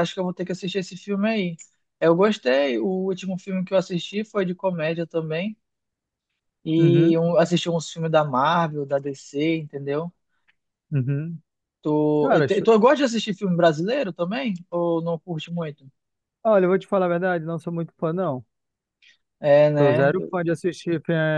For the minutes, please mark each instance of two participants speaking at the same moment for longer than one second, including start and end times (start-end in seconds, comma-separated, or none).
none